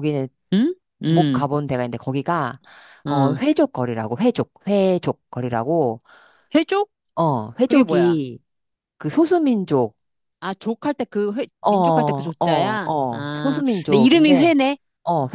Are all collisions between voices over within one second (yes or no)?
no